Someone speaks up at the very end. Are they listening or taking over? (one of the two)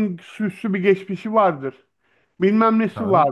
listening